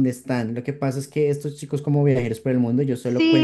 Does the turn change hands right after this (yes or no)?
yes